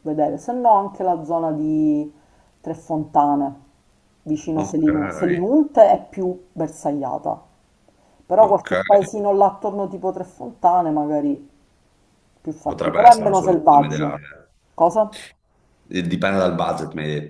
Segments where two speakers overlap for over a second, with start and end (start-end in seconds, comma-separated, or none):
12.6-14.2